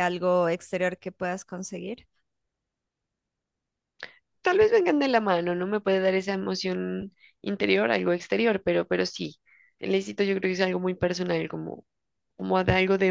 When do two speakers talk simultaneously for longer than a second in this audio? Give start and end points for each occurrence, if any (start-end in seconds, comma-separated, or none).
none